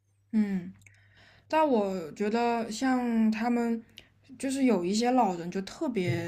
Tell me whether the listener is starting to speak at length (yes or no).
no